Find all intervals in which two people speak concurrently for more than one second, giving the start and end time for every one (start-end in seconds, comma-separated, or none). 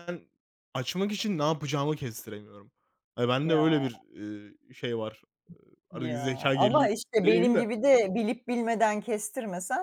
5.9-7.7